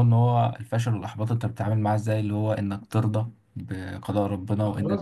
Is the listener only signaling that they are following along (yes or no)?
no